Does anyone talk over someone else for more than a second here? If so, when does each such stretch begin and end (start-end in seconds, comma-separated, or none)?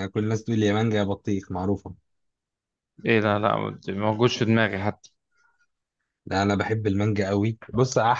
none